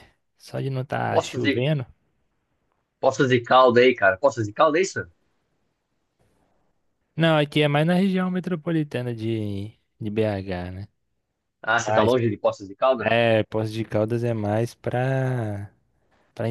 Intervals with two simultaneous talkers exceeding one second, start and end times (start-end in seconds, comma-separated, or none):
none